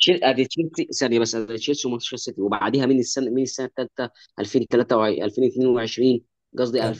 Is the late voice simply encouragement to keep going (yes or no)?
yes